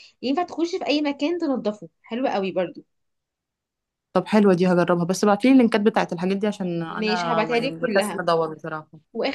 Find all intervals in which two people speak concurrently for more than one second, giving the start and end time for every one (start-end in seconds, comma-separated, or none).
6.9-8.2